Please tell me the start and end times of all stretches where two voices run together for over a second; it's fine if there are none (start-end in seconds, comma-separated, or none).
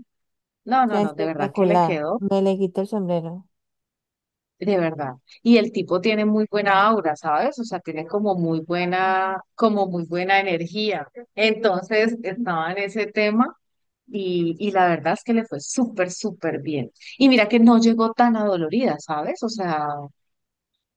0.9-2.2